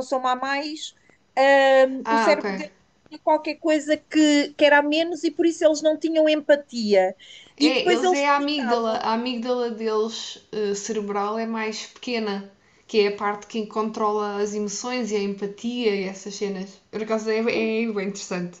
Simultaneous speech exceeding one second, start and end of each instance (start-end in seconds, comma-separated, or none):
7.6-9.1